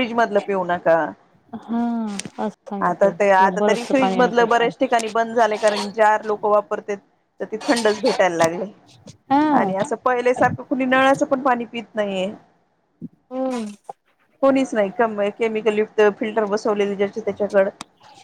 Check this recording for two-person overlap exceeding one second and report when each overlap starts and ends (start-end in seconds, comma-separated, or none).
2.9-4.7